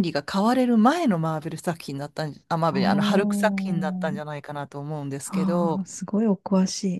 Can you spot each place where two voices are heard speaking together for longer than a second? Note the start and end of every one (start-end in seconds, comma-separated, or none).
2.7-4.3